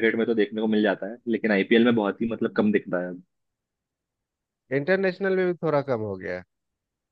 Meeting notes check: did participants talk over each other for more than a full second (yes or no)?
no